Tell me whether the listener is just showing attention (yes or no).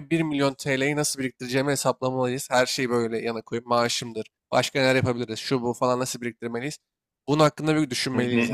no